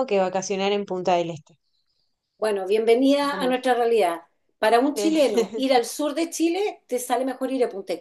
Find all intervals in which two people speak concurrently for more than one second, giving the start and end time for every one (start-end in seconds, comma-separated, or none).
none